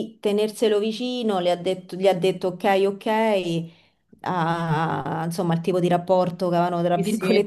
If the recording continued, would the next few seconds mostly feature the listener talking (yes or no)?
yes